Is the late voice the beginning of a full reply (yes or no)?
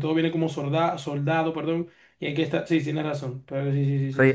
yes